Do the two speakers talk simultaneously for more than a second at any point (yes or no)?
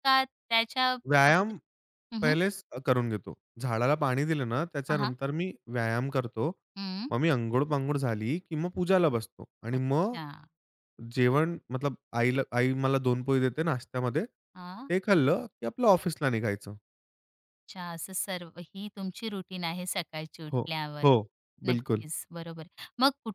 no